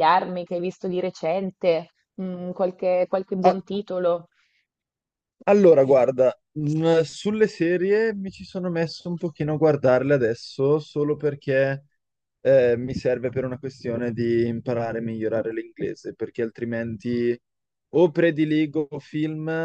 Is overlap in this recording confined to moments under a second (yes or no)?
yes